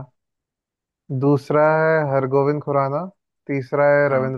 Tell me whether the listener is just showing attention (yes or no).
yes